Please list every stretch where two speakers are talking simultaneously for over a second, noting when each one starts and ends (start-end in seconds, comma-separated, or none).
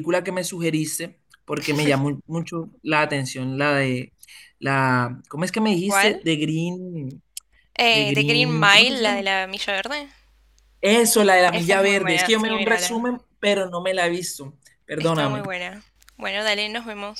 7.9-9.2, 11.5-13.1